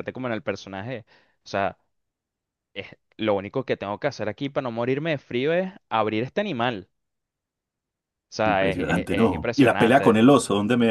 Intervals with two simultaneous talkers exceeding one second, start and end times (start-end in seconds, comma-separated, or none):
8.4-10.2